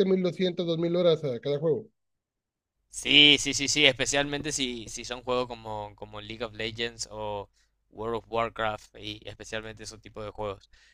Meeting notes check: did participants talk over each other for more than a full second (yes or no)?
no